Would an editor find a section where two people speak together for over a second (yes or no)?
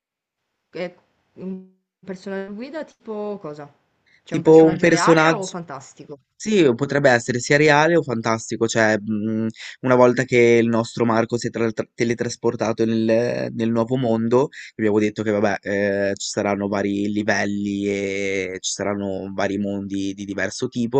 yes